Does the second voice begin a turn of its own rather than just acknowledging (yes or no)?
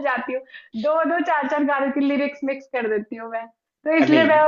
no